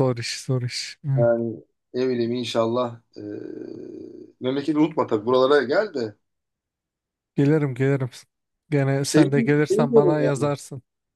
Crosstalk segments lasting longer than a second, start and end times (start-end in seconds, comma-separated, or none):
9.0-10.5